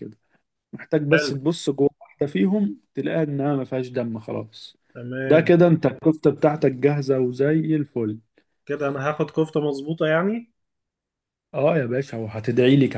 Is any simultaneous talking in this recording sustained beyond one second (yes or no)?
no